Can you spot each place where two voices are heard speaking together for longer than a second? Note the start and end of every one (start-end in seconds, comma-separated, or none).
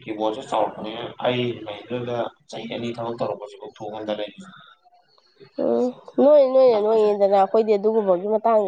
none